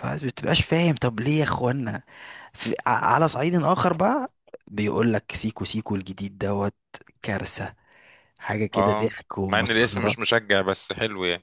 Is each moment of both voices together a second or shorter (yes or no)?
no